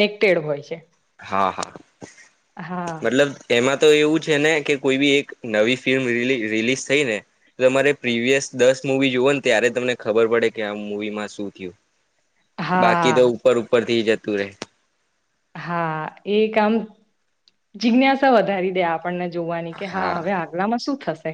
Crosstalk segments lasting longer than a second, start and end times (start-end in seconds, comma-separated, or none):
none